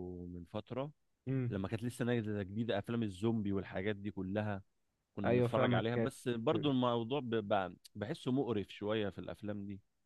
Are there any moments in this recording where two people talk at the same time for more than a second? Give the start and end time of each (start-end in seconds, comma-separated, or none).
5.2-6.7